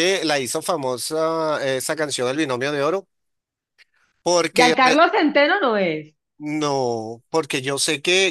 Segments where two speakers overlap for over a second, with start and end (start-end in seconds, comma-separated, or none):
none